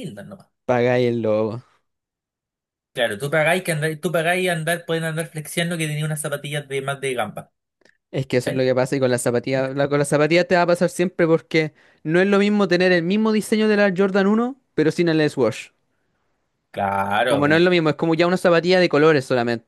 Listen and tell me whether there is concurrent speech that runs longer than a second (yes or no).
no